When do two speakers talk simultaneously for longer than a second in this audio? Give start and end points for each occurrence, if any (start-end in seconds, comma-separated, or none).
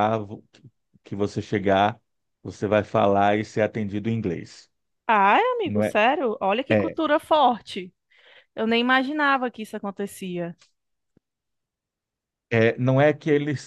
none